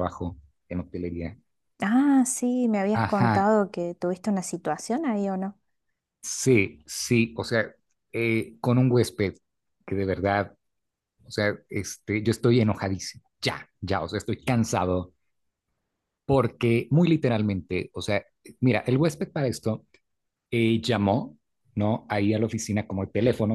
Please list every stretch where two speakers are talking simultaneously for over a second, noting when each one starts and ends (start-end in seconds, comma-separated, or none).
none